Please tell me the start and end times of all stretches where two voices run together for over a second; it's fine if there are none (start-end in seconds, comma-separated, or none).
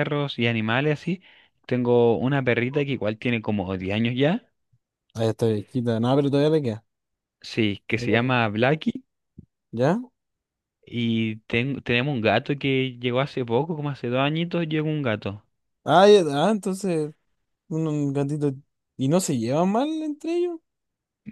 none